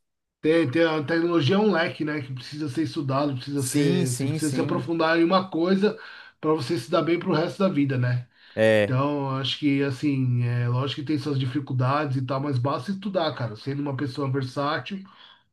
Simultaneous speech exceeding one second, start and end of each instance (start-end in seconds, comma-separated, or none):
3.6-4.8